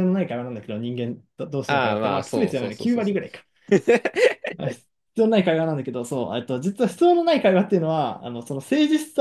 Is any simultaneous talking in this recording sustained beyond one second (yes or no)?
yes